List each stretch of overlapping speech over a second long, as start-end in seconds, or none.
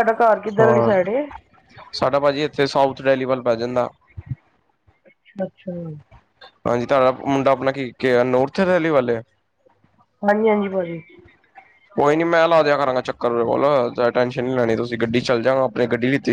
none